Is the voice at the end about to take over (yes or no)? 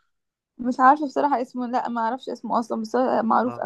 yes